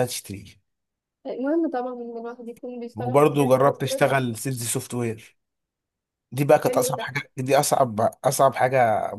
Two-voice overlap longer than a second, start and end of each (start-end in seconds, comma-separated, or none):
3.0-4.2